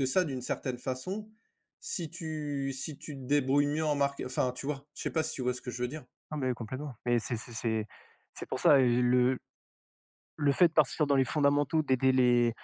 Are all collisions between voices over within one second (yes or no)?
yes